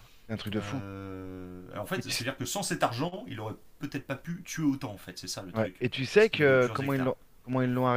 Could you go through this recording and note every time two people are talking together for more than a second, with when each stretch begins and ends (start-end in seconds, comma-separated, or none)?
5.5-7.2